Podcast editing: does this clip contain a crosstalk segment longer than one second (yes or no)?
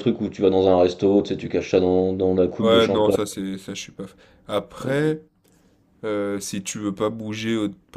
no